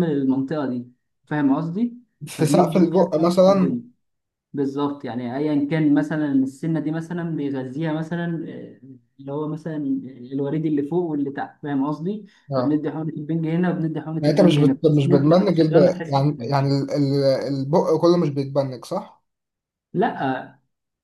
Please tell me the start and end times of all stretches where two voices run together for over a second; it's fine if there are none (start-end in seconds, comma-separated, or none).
2.4-3.8, 14.2-16.5